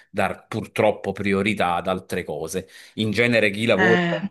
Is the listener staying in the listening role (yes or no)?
yes